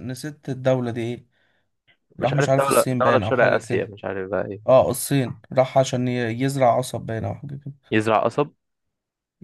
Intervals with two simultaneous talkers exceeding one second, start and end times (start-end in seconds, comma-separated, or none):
2.2-3.9